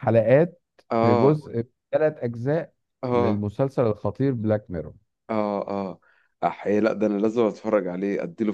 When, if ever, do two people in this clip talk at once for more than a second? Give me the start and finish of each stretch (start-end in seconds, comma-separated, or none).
none